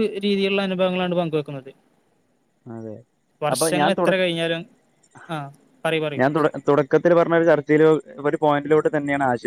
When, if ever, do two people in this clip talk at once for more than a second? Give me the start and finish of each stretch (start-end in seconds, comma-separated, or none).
none